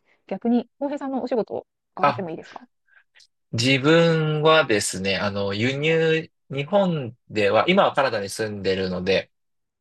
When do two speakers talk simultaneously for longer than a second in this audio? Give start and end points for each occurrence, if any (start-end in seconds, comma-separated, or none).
none